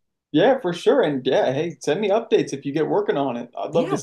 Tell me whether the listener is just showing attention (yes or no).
no